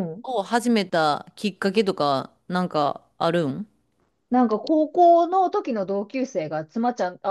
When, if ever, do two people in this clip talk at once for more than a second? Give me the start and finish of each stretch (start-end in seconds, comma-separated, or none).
none